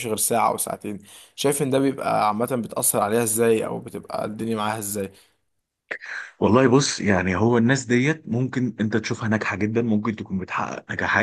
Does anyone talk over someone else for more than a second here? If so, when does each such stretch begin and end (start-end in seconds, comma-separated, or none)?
none